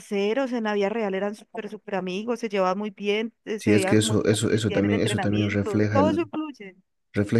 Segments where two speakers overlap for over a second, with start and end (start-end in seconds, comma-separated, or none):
3.6-6.3